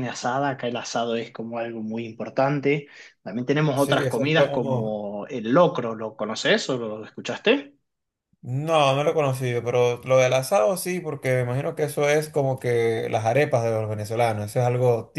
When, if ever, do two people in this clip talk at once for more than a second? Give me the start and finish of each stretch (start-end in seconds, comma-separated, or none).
3.7-5.0